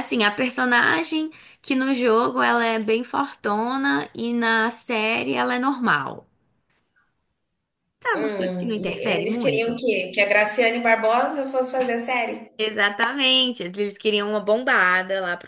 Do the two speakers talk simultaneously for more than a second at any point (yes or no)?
yes